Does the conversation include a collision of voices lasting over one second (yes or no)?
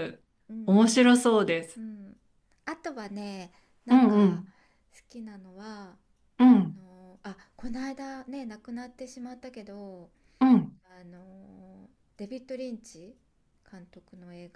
no